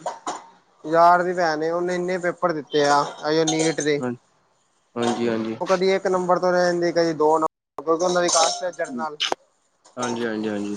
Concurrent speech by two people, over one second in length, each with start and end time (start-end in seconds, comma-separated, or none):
none